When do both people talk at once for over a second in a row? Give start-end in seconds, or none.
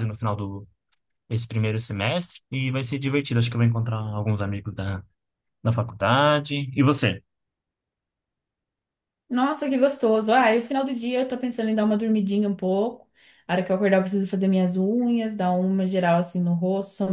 none